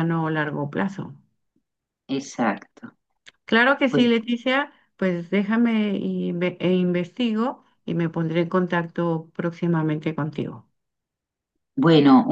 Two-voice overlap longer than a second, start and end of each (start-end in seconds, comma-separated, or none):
none